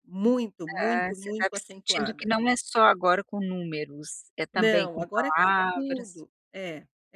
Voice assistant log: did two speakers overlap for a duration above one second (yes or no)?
yes